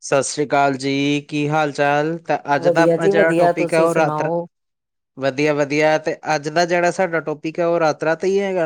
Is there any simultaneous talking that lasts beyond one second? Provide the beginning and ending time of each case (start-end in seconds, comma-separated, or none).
2.6-4.3